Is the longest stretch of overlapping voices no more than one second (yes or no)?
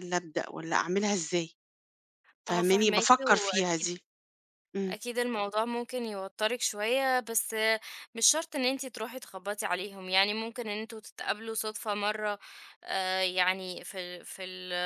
no